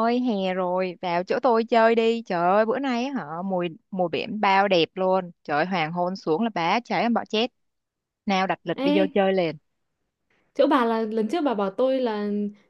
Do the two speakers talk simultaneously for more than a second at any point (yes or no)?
no